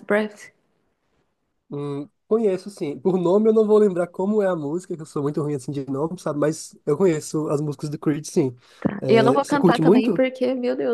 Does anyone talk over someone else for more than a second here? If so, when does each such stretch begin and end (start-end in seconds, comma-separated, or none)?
9.0-10.2